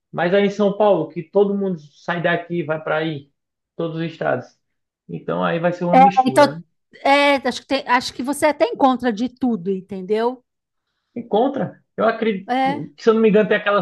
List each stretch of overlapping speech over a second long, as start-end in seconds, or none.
none